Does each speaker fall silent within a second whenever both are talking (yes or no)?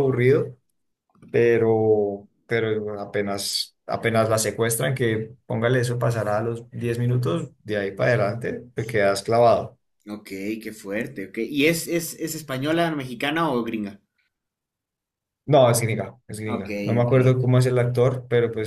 yes